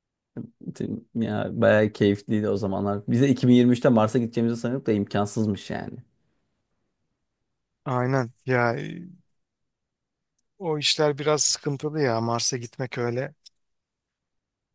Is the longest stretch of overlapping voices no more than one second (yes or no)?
yes